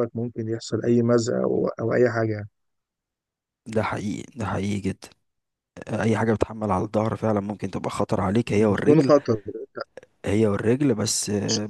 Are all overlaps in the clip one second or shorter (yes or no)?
yes